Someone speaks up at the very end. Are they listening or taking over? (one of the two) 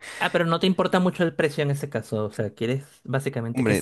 taking over